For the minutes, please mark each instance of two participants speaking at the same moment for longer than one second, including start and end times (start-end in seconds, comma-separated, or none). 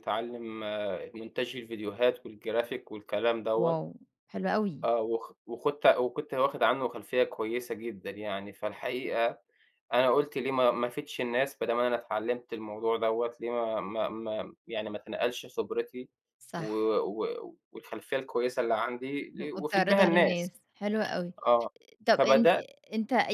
19.4-20.6